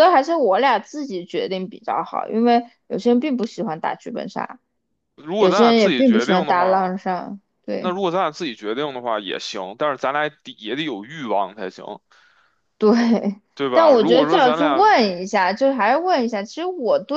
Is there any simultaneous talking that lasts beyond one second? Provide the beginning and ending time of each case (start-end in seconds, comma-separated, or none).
5.4-6.9, 13.6-14.9